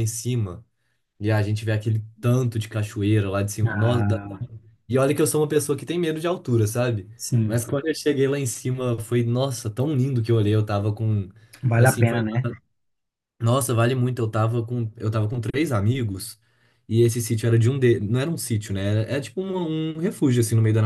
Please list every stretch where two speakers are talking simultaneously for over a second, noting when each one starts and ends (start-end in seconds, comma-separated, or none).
none